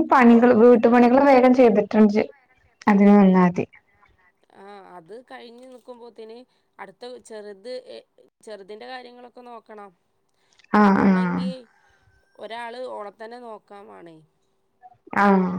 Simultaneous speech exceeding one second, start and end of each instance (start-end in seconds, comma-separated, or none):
none